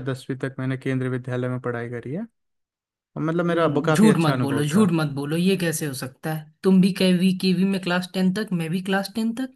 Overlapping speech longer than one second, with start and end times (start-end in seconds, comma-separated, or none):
3.5-4.9